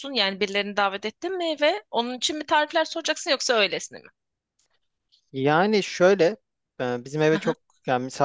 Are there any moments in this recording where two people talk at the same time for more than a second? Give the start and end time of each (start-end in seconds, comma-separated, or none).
none